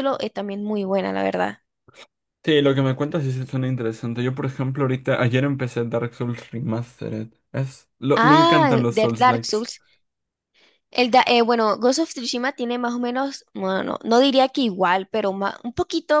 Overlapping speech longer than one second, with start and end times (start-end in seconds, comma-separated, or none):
8.2-9.7